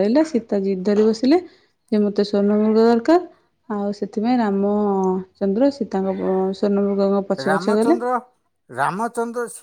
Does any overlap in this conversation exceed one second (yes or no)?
no